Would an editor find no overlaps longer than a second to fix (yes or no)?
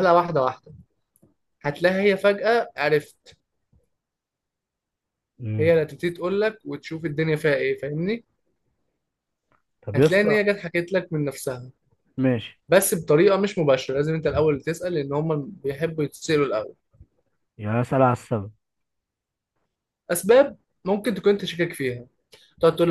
yes